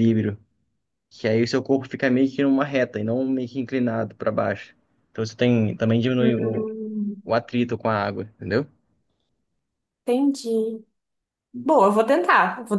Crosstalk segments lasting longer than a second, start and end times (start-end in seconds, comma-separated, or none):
none